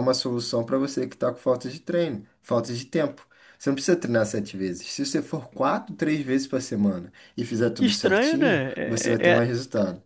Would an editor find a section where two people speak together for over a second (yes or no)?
yes